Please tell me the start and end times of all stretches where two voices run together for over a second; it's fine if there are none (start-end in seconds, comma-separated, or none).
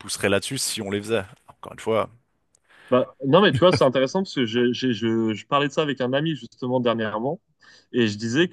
none